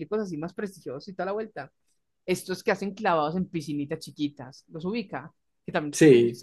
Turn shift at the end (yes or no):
no